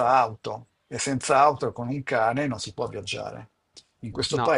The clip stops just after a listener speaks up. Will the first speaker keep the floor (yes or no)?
yes